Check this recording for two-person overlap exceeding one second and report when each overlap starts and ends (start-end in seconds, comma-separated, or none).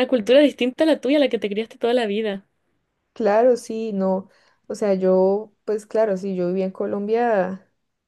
none